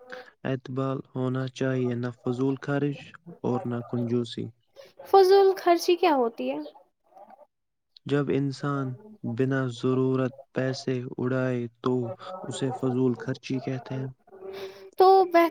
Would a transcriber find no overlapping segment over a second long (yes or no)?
yes